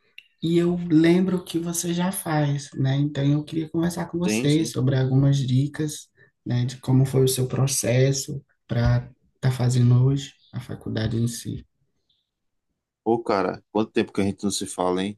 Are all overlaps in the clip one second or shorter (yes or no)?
yes